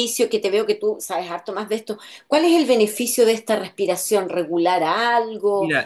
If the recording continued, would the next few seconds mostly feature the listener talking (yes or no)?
yes